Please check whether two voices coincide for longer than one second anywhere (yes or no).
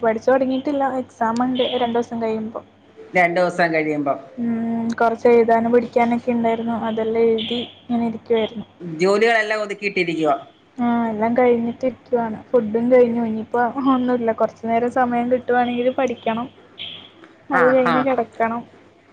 no